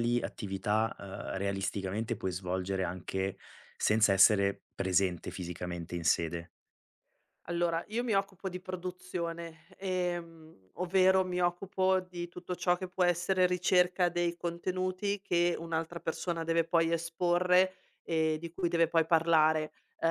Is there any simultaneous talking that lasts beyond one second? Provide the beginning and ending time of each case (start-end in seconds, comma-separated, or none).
none